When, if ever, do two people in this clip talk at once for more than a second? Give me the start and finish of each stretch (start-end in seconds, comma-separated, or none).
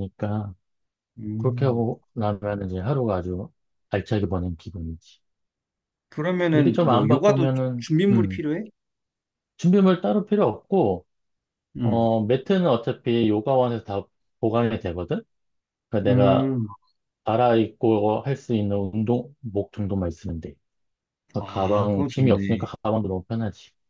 6.5-8.4, 21.5-22.7